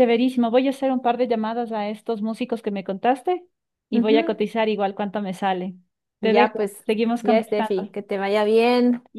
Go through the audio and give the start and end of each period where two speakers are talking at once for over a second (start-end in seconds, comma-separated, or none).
6.2-8.0